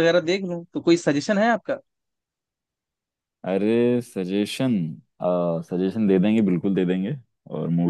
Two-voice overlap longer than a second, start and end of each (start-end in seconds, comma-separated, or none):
none